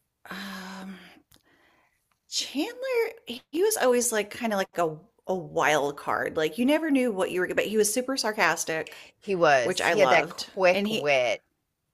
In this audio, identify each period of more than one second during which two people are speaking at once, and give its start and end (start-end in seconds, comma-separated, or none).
9.6-11.1